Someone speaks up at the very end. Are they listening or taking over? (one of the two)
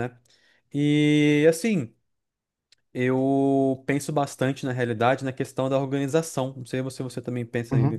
taking over